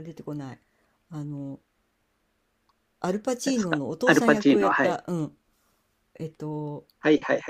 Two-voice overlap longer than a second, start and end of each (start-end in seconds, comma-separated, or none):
3.4-5.0